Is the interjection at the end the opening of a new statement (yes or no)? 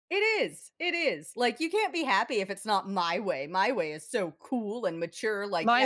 yes